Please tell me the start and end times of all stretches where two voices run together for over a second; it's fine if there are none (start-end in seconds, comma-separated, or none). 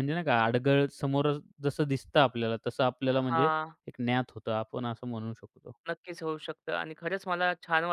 none